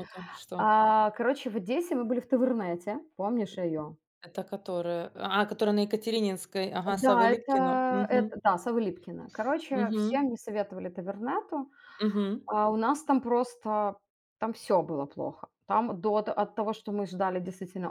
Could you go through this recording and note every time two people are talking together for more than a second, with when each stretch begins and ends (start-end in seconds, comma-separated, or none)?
6.9-8.3